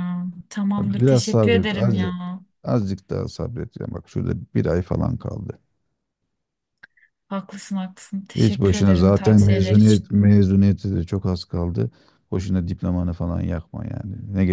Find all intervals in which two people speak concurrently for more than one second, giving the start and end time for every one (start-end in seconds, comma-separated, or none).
0.8-2.1, 8.4-10.0